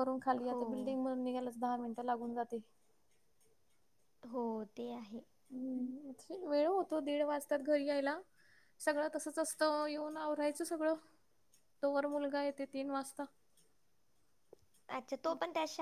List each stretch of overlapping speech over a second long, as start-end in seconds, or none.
none